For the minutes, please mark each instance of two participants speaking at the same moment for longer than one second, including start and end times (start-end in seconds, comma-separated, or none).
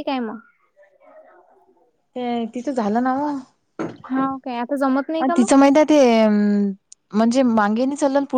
4.1-5.5